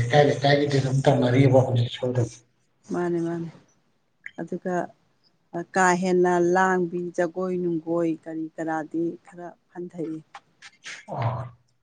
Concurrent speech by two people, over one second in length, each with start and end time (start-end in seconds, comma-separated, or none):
none